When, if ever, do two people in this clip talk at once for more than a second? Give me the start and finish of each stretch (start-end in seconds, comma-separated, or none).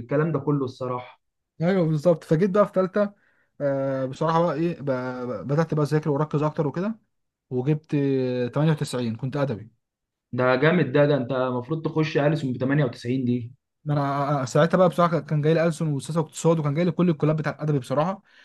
none